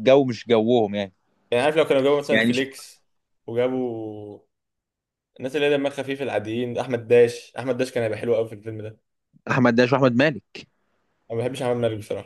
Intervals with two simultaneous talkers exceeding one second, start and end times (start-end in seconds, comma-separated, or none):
none